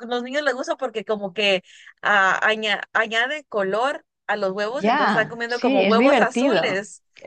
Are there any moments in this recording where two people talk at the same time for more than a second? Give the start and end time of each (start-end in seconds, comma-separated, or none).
4.7-6.8